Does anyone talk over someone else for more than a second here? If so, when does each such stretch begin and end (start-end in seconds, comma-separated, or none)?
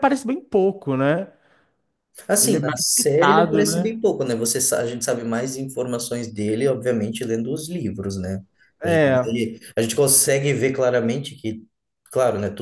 2.4-3.9